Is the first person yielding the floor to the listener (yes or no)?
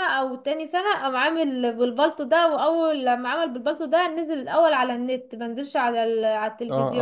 yes